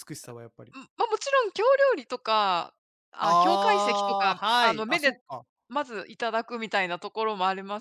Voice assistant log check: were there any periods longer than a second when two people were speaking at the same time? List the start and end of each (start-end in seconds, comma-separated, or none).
3.2-5.1